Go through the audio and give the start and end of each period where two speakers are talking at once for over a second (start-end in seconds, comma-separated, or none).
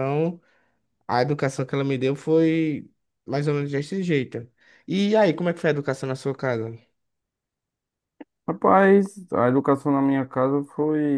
none